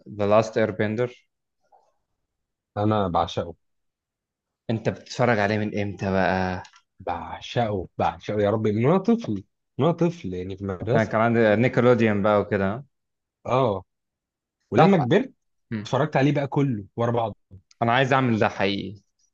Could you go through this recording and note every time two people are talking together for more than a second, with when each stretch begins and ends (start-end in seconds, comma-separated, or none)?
none